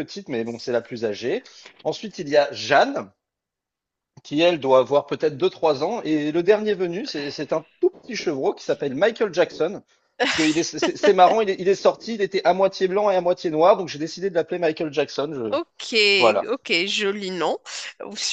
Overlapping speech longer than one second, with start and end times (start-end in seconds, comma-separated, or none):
none